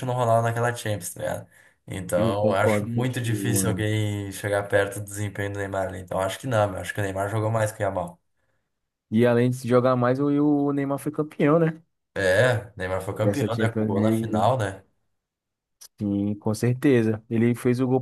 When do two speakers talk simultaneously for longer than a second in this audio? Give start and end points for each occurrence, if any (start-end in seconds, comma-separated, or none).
2.2-3.9, 13.2-14.4